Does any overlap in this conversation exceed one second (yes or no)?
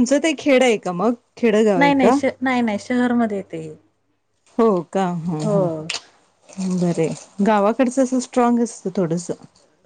no